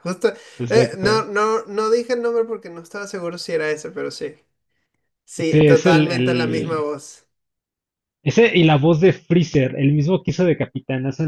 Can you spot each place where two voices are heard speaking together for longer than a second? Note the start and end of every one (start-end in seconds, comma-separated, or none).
5.4-6.9